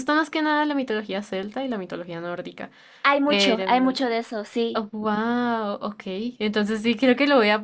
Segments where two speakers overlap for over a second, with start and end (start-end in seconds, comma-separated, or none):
none